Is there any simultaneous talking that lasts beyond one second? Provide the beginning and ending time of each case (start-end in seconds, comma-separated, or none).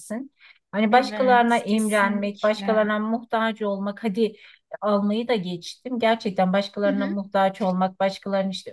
0.9-2.9